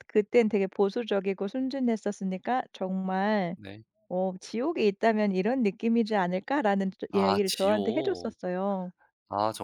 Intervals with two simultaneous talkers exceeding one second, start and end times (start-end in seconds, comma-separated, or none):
7.1-8.3